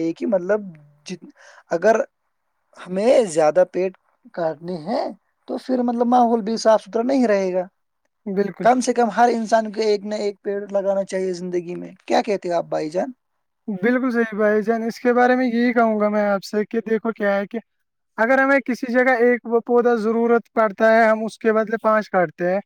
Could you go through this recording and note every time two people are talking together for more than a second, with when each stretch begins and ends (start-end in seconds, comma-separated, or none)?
none